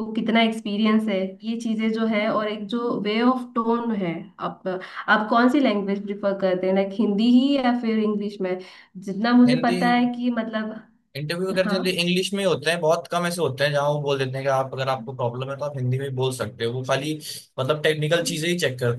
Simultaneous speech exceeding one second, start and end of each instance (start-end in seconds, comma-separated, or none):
none